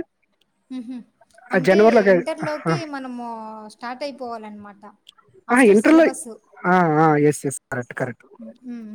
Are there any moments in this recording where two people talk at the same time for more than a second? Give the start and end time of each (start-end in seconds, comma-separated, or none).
none